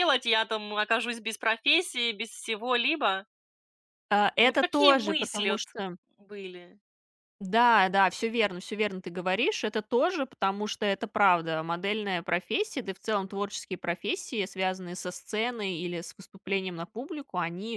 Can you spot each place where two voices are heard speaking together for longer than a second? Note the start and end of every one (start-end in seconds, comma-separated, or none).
4.3-5.6